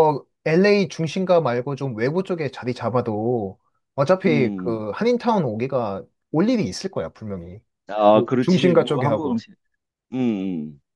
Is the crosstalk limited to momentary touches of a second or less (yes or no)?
no